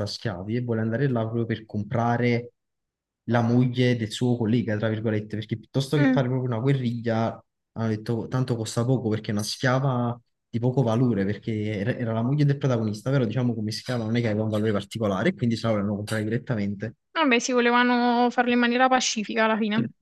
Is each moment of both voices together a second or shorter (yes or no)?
yes